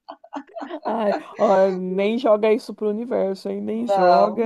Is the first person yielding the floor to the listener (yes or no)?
no